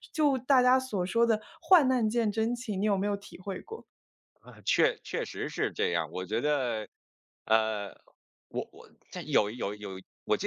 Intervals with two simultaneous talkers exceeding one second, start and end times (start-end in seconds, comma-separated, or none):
none